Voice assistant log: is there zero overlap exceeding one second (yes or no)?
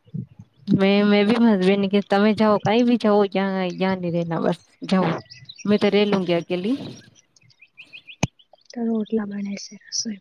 yes